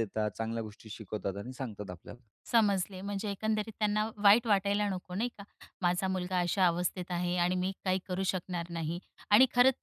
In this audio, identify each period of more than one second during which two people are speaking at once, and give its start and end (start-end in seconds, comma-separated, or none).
none